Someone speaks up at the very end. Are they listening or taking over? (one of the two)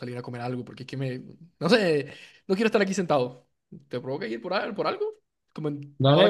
taking over